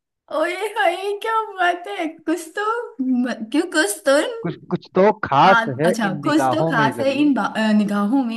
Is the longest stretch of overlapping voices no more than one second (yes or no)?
no